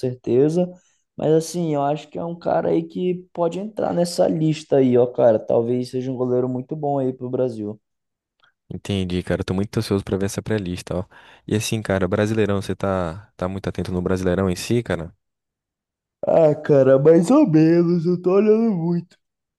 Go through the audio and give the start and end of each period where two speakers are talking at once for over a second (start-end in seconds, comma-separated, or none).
none